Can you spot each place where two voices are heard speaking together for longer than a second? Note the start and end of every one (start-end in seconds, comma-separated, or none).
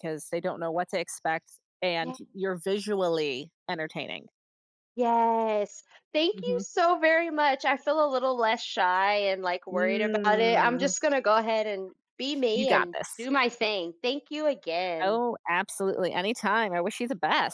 9.7-10.9